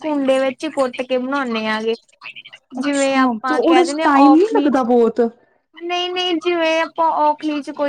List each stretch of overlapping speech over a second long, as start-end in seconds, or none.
2.8-4.8